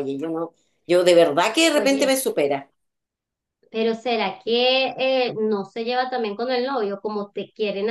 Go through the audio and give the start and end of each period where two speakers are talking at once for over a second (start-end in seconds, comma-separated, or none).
none